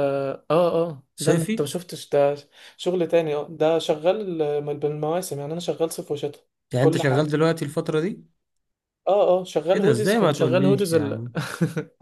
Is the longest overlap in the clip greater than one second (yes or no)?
yes